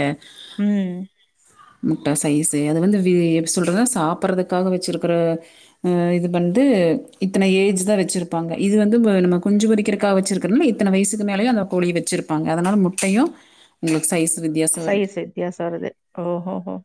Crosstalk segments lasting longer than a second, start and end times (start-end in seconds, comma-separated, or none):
none